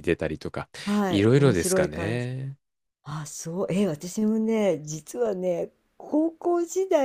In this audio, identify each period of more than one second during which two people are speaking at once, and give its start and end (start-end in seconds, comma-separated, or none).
1.1-2.3